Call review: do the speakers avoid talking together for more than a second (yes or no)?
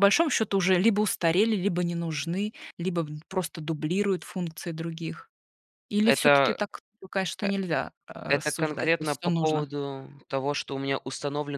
no